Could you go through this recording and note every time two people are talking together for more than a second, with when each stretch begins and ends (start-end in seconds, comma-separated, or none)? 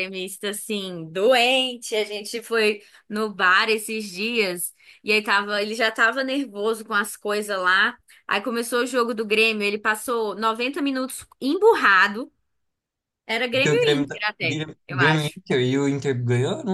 13.5-15.4